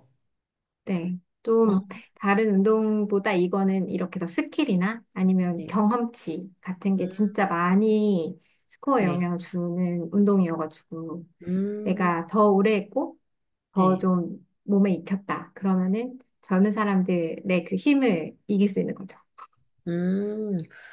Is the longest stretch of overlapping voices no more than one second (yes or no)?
yes